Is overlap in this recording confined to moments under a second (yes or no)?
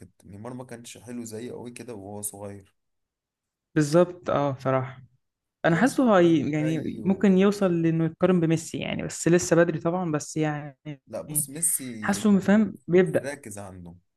no